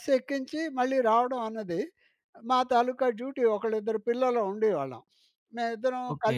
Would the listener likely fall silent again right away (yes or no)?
no